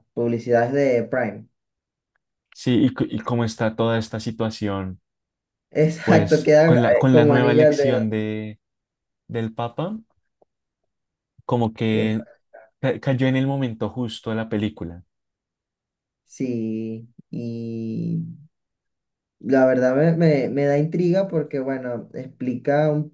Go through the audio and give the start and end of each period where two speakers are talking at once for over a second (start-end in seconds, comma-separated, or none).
6.0-8.0